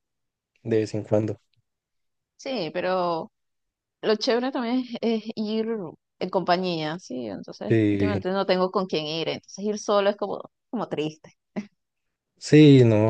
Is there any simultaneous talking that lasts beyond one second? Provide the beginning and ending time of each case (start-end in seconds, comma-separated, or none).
none